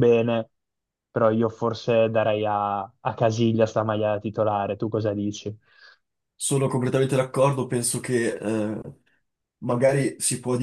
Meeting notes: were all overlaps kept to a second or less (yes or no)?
yes